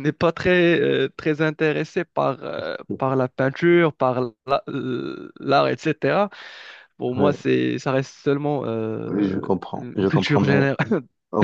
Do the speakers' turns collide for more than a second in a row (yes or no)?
yes